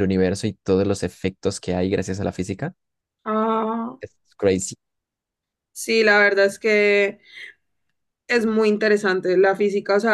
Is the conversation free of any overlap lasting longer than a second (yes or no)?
yes